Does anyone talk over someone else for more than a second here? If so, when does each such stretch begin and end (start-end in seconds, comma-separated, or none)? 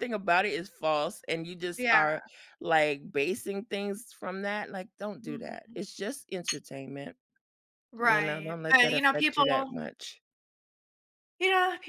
8.0-9.8